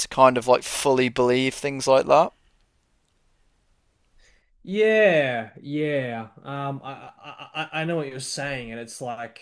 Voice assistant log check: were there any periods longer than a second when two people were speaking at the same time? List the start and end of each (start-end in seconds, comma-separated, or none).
none